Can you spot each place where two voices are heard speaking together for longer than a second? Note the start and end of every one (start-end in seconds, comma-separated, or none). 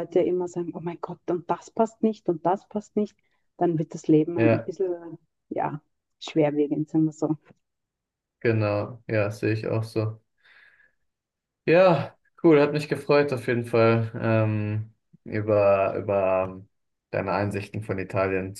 none